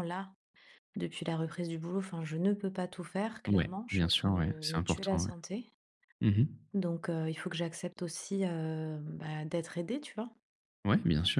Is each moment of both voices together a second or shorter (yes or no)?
no